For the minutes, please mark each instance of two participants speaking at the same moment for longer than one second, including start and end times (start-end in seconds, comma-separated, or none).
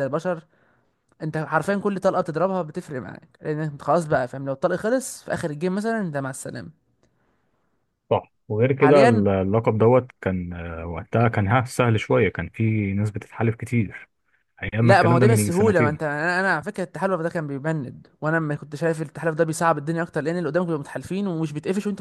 14.8-16.0